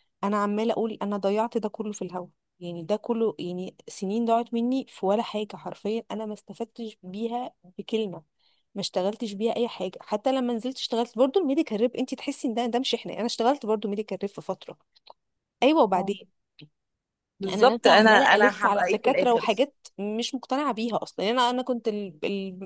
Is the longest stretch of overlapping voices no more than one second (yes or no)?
no